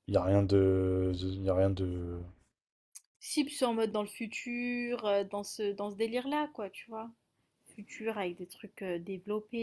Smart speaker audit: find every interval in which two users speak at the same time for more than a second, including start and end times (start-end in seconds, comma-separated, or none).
none